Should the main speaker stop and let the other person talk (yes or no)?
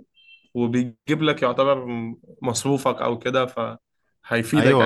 yes